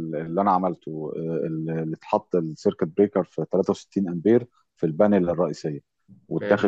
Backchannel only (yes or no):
yes